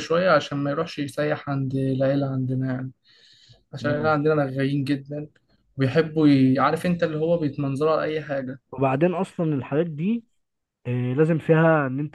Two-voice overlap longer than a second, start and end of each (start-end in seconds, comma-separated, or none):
none